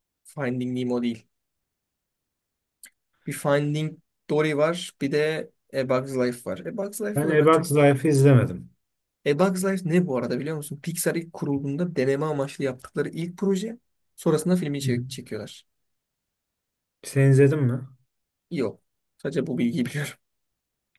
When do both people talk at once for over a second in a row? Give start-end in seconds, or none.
none